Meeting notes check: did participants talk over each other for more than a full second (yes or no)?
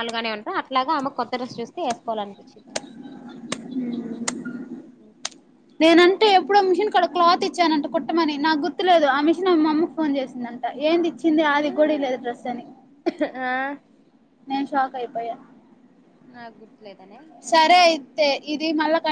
no